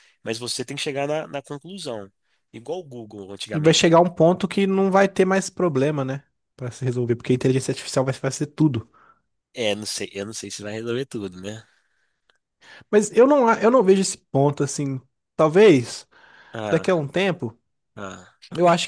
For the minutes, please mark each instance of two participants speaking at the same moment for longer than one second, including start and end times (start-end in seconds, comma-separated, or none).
none